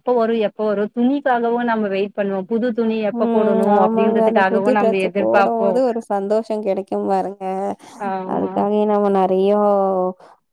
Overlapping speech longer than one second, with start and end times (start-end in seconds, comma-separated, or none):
3.2-4.7